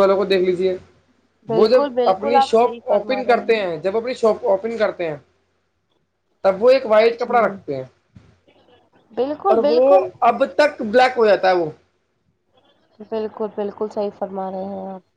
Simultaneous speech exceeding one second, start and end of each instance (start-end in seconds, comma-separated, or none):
1.5-3.4